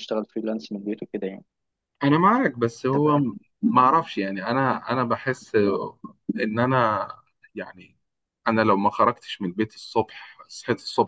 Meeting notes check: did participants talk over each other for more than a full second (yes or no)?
no